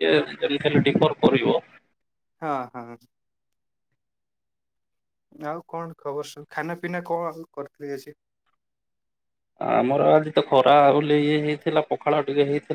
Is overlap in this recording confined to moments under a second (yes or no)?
yes